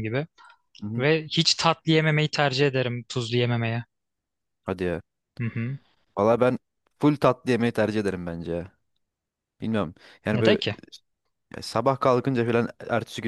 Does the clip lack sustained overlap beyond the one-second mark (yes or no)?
yes